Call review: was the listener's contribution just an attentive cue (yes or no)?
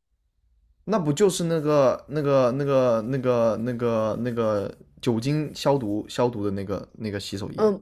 no